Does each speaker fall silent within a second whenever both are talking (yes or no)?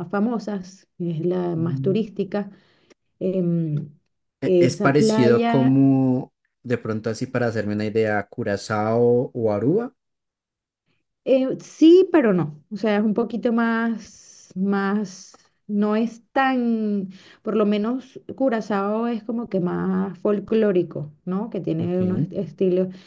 no